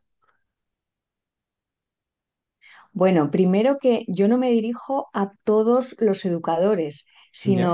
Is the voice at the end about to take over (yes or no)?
no